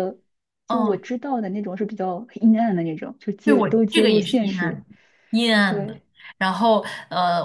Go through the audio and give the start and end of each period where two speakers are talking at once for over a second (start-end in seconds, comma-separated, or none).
3.4-4.8